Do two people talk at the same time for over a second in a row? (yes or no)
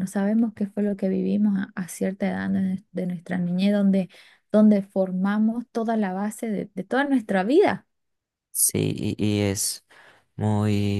no